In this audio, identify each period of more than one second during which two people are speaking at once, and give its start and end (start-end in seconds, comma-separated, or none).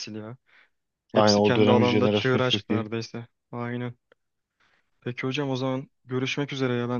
1.1-2.9